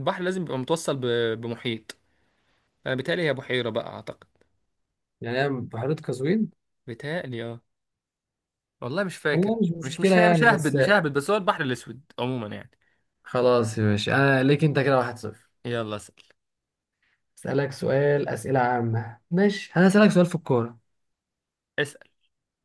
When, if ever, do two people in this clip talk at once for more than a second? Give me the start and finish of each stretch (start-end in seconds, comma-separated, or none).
9.3-10.8